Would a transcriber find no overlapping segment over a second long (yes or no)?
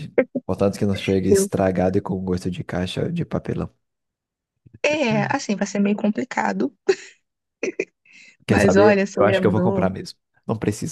no